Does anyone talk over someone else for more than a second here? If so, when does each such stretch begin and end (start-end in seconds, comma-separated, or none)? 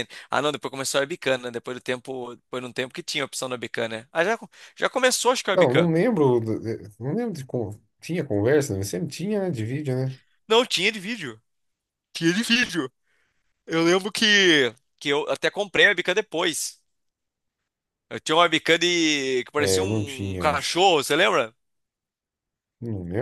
19.6-20.8